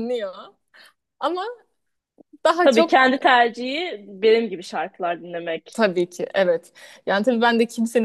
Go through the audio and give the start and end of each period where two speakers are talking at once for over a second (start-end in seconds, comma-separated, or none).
none